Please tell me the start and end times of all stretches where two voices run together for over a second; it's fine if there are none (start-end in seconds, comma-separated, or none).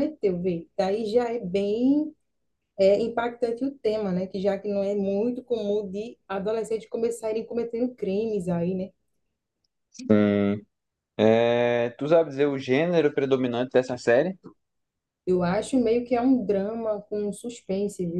none